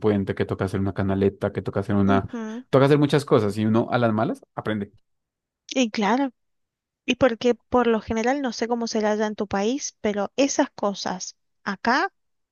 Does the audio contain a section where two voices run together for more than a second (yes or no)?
no